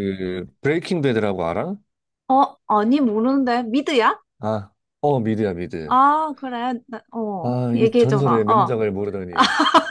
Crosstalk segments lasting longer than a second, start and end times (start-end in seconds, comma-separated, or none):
7.4-8.8